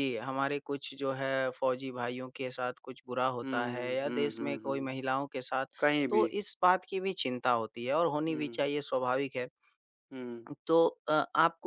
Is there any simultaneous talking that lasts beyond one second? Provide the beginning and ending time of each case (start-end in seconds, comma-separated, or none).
3.4-4.9